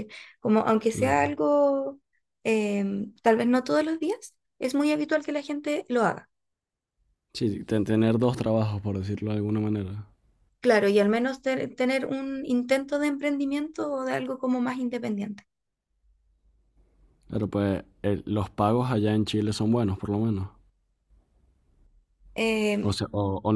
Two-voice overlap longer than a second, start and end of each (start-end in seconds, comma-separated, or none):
none